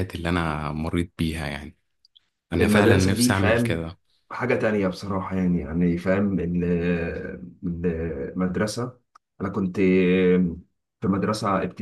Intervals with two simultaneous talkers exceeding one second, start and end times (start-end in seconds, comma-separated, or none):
2.6-3.8